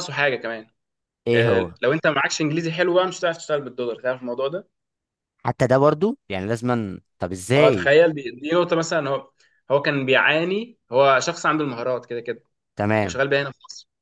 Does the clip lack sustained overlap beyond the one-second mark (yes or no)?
yes